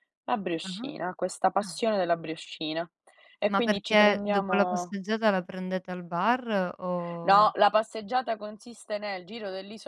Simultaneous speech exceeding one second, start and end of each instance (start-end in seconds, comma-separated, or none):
3.5-5.0